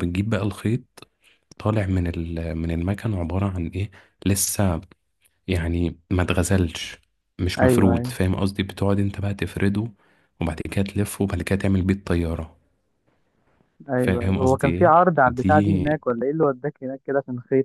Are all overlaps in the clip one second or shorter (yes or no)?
no